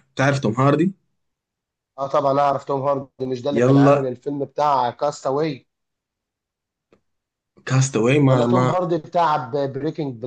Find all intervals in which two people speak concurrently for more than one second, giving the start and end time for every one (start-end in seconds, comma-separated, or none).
none